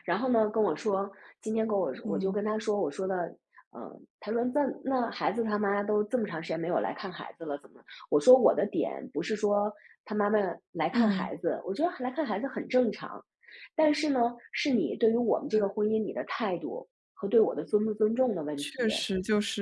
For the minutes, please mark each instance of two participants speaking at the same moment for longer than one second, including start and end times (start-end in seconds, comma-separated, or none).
none